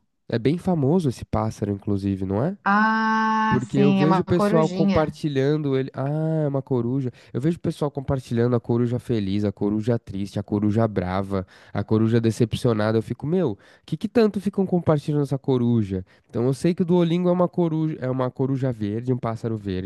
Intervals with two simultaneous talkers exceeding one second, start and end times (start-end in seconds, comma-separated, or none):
3.5-5.2